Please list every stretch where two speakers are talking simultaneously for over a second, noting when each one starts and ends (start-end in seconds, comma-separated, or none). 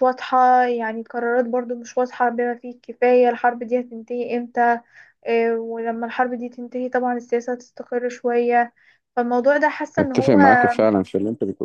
none